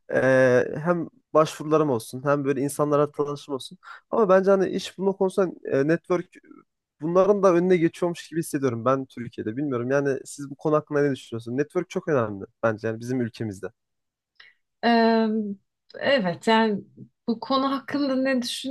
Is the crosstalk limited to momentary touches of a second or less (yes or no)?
yes